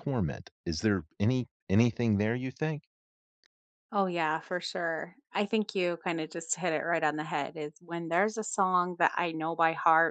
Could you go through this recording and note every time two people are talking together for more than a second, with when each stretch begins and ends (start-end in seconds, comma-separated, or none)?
none